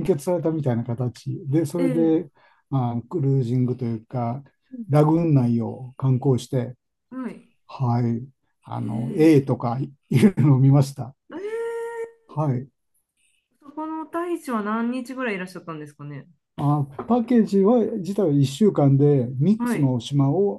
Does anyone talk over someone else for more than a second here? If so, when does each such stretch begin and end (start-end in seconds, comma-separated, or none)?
none